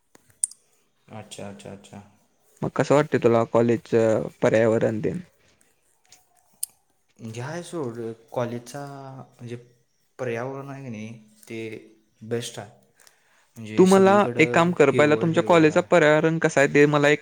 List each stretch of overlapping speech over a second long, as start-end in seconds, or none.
13.8-16.0